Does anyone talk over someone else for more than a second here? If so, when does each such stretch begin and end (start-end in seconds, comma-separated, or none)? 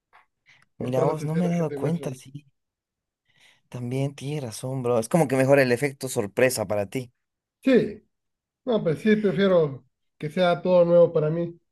0.8-2.2